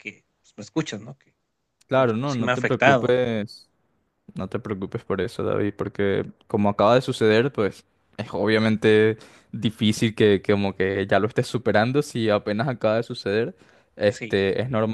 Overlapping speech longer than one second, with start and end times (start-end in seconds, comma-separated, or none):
1.9-3.1